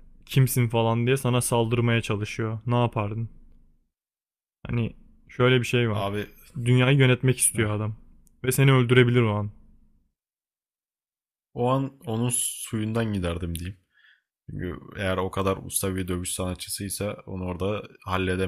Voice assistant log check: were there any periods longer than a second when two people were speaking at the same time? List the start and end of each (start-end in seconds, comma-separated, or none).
none